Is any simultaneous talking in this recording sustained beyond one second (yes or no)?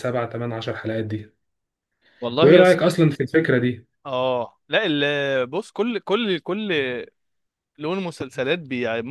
no